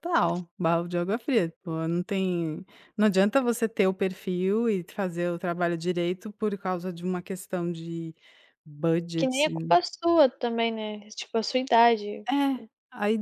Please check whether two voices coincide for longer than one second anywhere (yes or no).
no